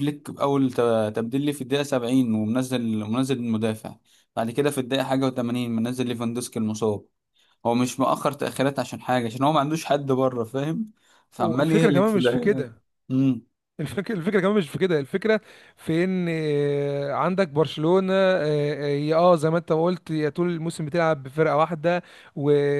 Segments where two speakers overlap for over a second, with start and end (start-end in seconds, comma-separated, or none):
11.4-12.7